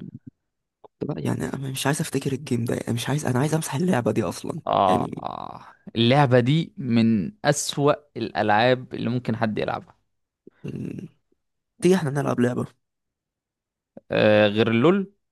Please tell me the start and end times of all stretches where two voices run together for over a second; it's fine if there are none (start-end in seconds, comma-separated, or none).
none